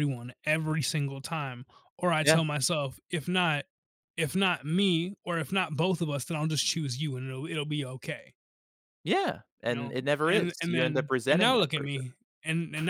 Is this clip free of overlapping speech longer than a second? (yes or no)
no